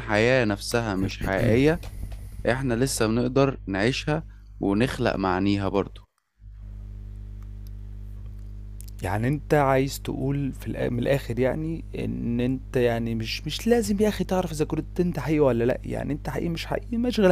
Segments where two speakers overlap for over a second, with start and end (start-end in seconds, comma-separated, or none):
none